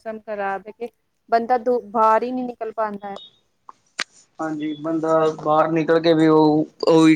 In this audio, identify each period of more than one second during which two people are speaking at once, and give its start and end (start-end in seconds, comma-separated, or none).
none